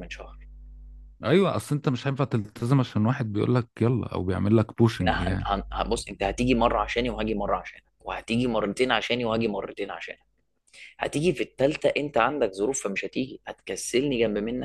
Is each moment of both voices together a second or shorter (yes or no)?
yes